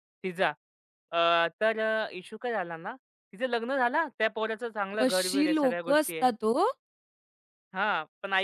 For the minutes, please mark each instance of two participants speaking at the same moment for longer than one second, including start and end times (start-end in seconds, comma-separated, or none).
5.0-6.3